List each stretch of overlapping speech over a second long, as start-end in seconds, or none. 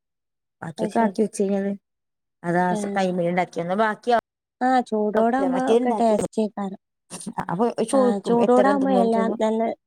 none